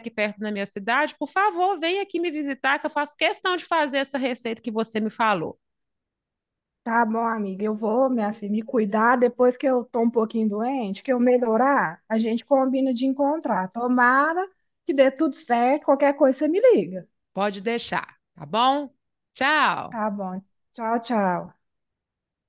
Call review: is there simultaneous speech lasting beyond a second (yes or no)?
no